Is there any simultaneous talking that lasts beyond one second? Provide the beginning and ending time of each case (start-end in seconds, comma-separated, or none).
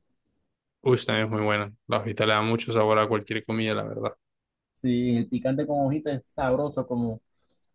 none